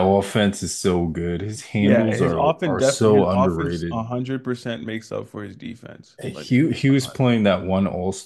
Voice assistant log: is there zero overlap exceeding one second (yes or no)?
no